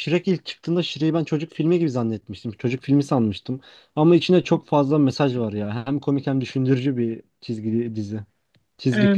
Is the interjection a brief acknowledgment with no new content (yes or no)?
no